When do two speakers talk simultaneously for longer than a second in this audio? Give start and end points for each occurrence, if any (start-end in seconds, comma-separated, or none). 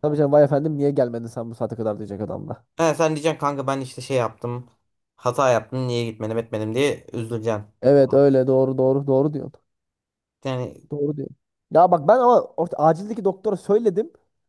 none